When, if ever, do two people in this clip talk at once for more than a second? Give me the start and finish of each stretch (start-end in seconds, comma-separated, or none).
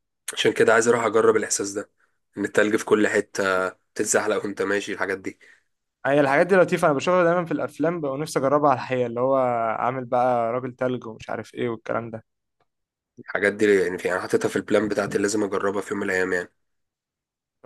none